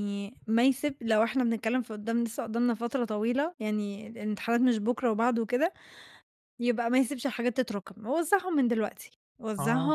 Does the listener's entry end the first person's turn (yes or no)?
yes